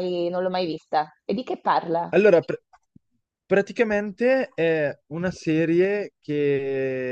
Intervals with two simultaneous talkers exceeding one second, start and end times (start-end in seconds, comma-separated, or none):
none